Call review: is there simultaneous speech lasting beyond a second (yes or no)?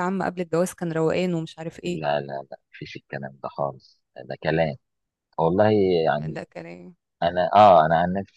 no